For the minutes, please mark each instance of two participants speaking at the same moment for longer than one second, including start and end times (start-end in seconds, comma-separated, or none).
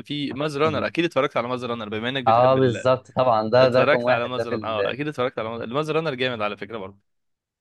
3.6-5.0